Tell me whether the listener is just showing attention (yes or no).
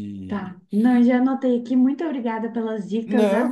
no